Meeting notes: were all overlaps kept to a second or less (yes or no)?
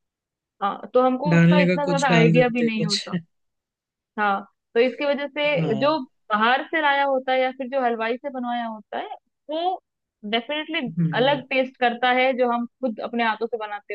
no